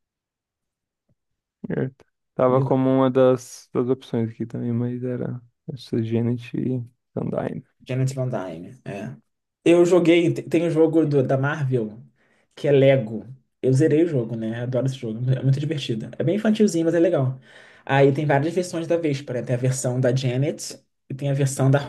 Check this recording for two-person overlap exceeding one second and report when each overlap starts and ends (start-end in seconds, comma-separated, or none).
none